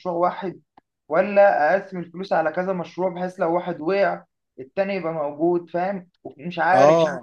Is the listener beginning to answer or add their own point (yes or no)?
yes